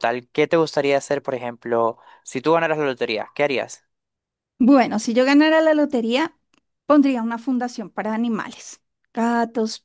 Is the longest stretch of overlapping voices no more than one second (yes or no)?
yes